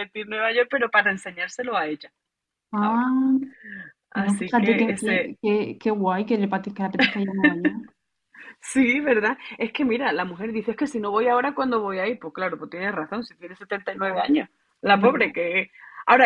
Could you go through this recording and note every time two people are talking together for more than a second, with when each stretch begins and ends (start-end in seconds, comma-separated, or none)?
4.1-5.3